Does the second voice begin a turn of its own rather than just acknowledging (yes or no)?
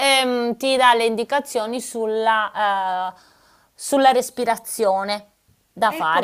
yes